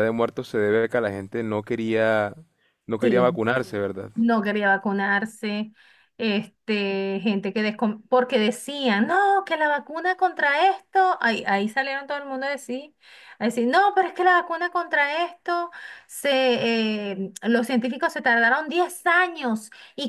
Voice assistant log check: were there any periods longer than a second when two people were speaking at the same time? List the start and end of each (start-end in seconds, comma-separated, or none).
none